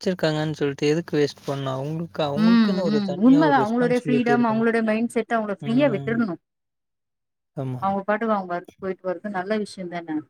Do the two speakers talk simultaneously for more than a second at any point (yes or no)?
yes